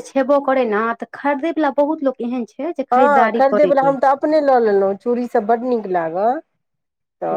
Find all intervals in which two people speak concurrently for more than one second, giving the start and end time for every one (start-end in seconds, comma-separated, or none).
2.9-4.3